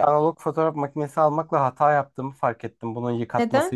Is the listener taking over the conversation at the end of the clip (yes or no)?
no